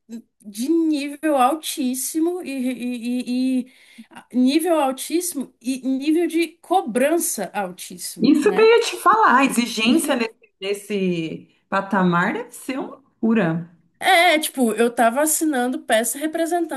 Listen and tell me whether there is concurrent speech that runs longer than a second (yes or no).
no